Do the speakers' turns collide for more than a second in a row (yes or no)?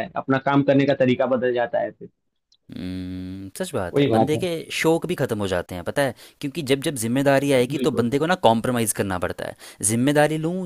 no